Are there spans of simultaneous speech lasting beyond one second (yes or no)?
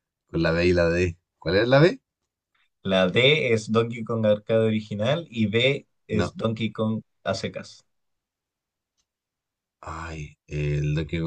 no